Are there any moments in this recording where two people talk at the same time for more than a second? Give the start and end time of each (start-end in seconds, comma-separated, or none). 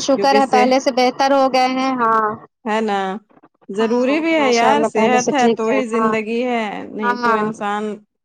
3.8-6.1